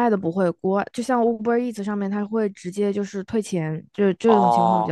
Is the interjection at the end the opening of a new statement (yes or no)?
yes